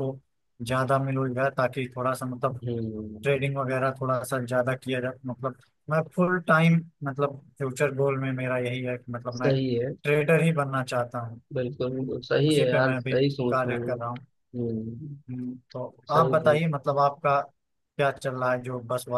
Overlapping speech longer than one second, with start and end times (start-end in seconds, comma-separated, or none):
11.9-14.2